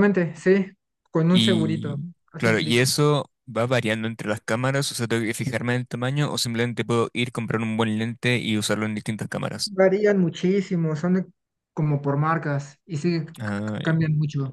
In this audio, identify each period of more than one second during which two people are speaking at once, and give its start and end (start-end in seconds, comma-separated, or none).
1.3-2.9